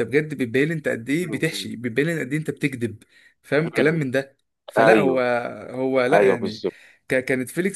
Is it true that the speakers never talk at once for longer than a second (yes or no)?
yes